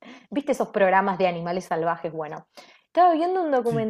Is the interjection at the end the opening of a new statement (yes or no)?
no